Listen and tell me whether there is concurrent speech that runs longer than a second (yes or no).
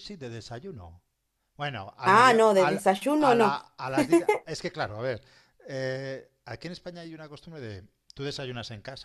yes